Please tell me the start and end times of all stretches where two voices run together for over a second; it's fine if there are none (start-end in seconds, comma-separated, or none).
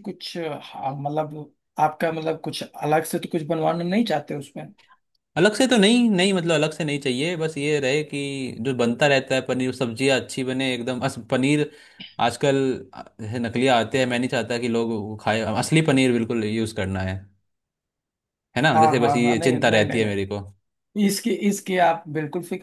18.7-20.4